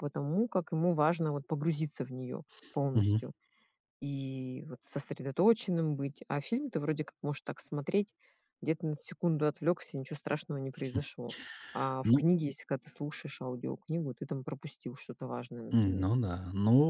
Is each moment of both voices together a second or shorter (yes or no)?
yes